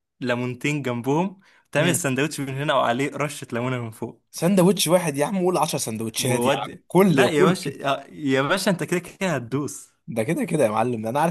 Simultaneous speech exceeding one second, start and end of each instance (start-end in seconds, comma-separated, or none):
6.2-7.8